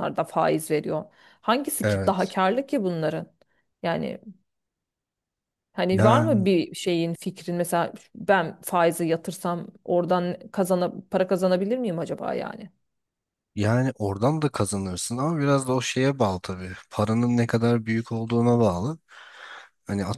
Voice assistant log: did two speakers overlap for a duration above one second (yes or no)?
no